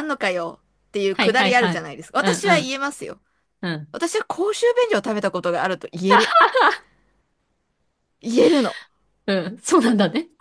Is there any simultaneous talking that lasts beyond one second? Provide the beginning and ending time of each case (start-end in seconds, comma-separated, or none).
1.1-2.5